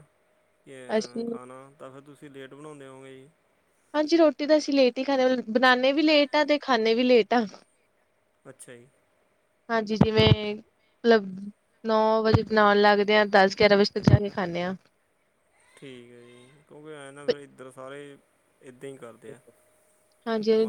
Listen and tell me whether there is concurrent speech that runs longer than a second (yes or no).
no